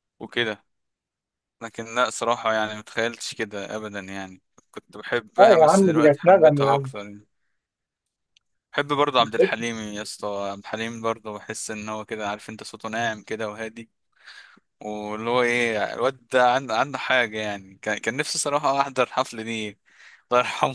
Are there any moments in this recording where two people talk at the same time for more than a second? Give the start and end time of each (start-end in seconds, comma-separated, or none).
5.4-6.9